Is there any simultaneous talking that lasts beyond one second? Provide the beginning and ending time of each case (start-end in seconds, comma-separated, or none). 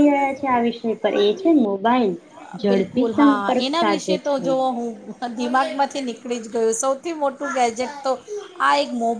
2.7-4.5